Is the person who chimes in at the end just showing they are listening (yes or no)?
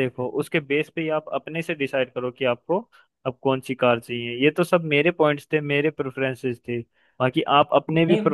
yes